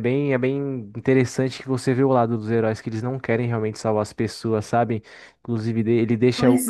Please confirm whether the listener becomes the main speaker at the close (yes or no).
no